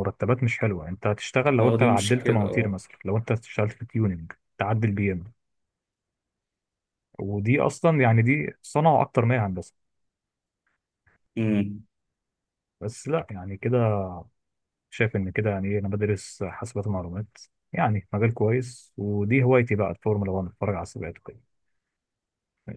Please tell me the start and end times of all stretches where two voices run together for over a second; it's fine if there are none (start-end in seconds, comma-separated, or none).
1.6-2.8